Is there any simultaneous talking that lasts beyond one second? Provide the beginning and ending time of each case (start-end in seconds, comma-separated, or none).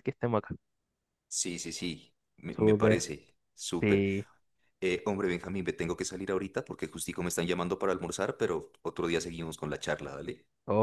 none